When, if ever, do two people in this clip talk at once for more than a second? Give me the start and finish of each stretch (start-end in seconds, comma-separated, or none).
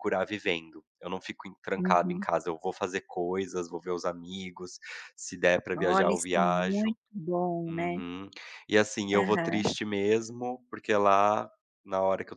5.7-7.0